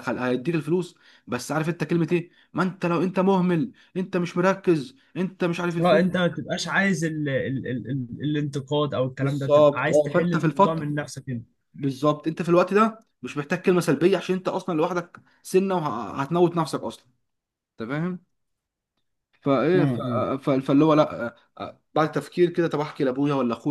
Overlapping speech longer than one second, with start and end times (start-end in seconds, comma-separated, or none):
9.2-10.9